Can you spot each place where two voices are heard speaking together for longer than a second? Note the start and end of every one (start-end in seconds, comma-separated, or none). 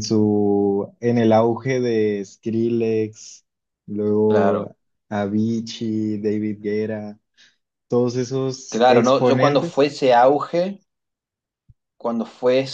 8.7-9.9